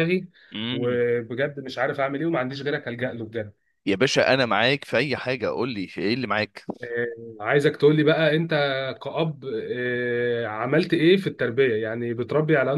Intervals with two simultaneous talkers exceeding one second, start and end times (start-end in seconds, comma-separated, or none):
none